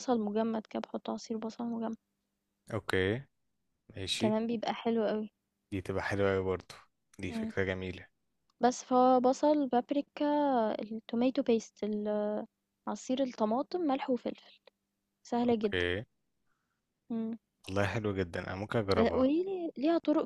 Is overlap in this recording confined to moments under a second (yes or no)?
yes